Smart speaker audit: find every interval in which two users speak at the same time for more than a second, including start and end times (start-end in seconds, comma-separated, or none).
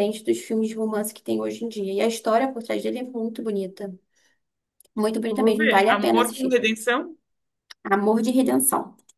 5.3-6.5